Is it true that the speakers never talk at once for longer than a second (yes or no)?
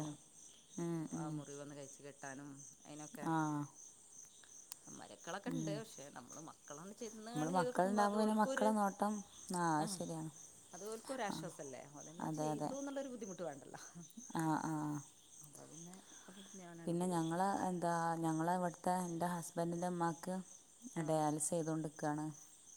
no